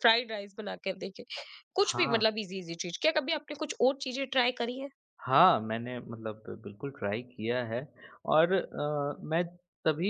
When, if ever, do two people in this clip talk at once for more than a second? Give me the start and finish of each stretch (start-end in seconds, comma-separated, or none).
none